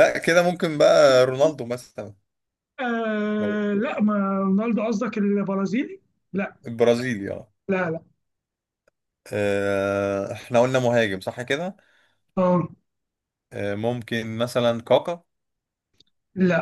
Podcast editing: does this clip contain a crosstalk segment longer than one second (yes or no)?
no